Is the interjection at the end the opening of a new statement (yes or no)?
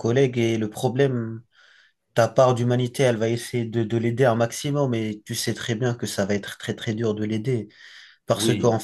no